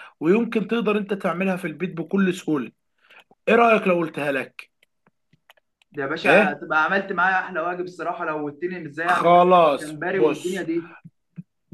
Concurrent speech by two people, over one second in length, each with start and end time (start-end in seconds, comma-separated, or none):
9.1-10.6